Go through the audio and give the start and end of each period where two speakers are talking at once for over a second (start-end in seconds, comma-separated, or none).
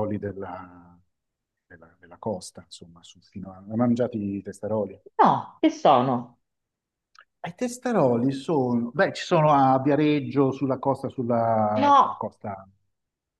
none